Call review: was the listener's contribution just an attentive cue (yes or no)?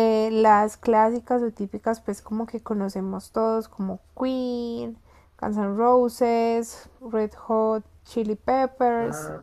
yes